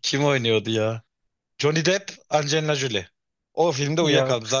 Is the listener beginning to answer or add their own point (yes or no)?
no